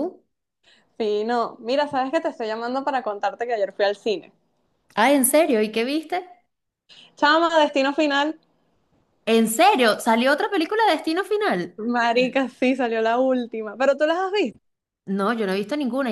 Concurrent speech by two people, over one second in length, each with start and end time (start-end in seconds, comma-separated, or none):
none